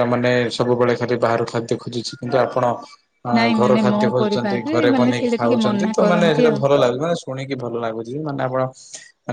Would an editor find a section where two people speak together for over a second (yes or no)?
yes